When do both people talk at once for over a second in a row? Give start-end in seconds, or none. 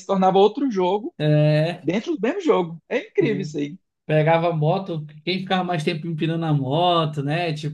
none